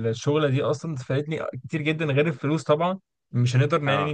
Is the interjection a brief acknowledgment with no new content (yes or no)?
yes